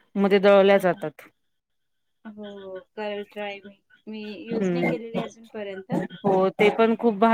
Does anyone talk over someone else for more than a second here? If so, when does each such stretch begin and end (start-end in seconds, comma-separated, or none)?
none